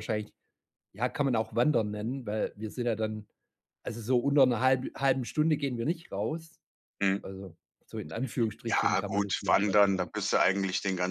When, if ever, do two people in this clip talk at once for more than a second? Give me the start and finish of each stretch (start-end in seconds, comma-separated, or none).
8.7-10.1